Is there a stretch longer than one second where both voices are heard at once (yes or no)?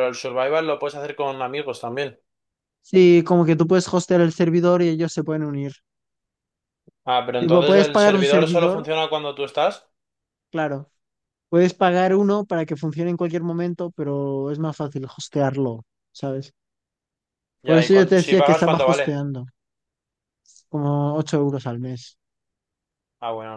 yes